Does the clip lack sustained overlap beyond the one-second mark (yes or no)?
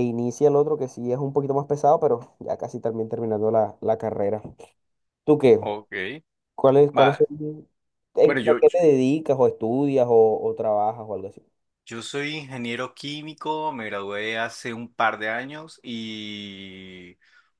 yes